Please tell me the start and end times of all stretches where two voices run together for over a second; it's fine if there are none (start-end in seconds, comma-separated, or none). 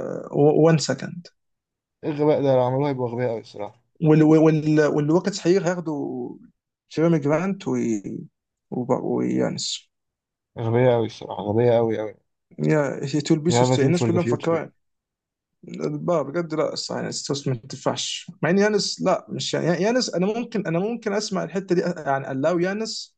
13.5-14.7